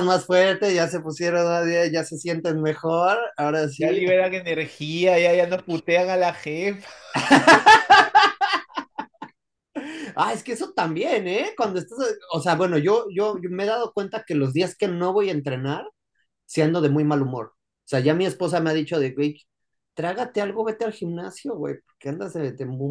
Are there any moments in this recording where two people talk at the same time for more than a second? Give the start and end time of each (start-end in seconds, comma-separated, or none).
none